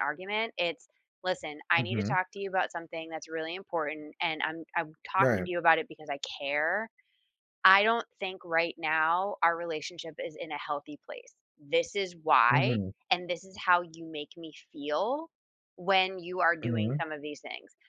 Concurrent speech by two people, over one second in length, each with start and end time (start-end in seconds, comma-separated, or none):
none